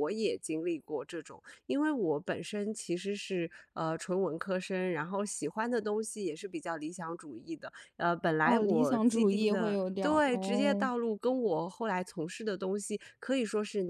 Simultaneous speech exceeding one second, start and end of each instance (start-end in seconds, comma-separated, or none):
8.4-10.9